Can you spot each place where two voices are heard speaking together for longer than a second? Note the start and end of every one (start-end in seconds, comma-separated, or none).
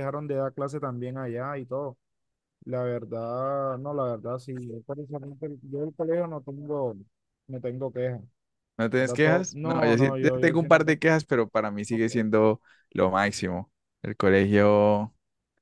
8.9-11.0